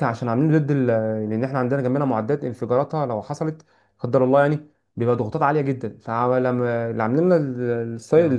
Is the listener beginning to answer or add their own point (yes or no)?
no